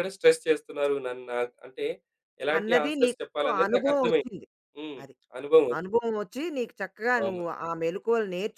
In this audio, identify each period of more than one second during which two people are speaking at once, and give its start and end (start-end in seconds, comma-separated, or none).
2.6-4.3